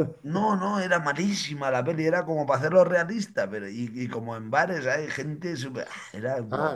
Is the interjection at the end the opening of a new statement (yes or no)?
yes